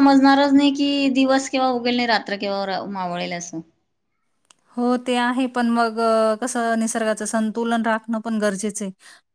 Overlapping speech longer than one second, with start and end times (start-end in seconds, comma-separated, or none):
none